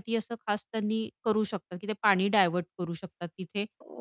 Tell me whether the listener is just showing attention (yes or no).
yes